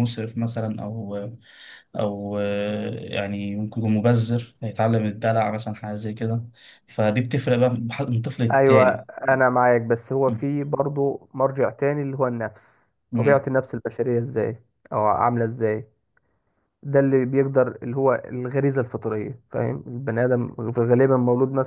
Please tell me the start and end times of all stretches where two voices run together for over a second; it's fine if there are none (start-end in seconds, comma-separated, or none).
none